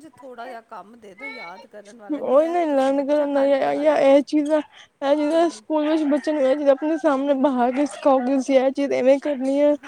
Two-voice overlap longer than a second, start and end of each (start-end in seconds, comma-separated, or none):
2.3-4.0